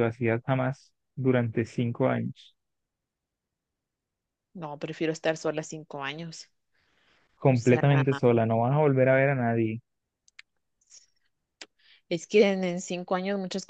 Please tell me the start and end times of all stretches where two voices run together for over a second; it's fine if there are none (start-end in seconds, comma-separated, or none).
none